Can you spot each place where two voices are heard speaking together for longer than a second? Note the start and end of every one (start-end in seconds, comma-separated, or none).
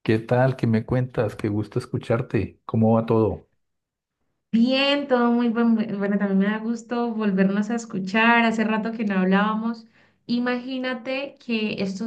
none